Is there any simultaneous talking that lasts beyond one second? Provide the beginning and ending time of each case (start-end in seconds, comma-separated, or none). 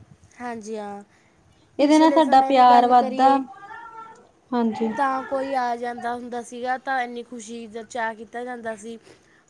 1.8-3.3